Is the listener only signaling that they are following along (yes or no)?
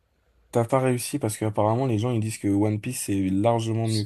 no